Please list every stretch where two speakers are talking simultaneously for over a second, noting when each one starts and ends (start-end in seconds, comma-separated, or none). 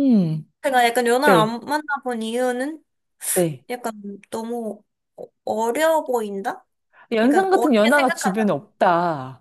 7.2-8.5